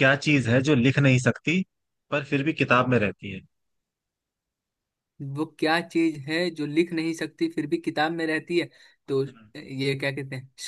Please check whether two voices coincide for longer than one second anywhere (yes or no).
no